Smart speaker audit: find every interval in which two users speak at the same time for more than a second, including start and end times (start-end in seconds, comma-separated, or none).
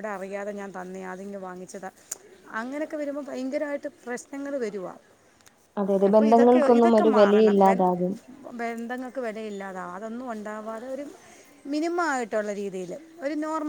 6.1-7.8